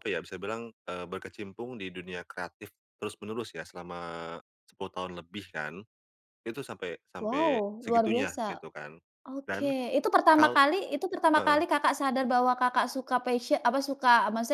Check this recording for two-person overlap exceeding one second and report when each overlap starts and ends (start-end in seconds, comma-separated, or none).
7.2-8.6